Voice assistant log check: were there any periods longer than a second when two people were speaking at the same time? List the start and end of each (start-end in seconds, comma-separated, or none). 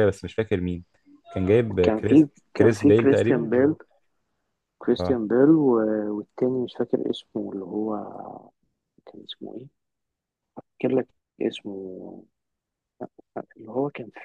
1.8-3.7